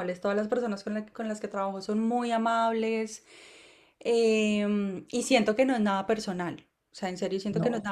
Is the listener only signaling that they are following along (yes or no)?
yes